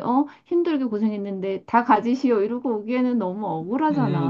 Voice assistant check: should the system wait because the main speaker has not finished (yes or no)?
no